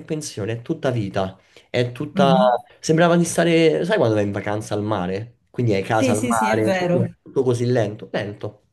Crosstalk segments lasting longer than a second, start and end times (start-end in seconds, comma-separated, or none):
5.9-7.1